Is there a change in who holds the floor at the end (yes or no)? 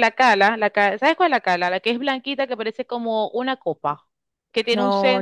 yes